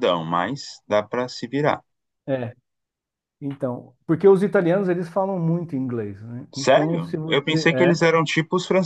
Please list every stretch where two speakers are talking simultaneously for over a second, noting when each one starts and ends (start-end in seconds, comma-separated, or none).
6.5-7.9